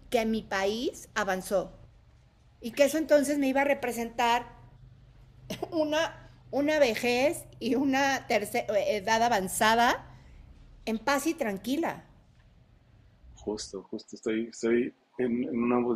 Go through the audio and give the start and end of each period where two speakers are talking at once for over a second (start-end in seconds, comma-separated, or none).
none